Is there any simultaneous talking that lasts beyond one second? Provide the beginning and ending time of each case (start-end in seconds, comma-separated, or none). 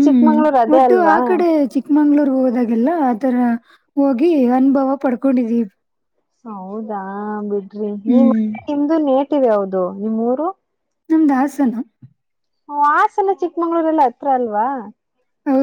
none